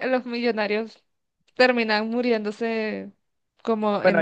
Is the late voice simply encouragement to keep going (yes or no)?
no